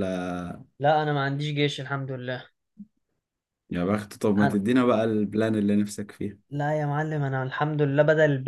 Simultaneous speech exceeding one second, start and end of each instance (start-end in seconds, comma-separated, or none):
none